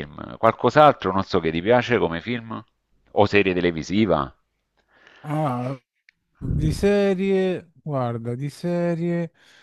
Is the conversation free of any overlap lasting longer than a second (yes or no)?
yes